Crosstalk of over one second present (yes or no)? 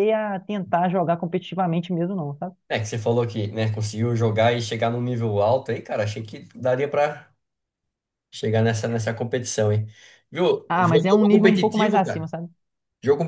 yes